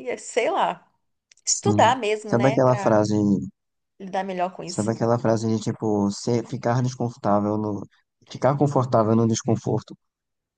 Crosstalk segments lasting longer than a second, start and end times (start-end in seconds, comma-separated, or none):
1.4-2.9